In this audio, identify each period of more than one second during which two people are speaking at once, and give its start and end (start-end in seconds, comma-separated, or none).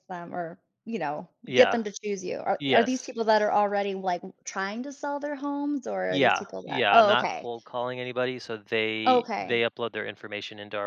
6.1-7.5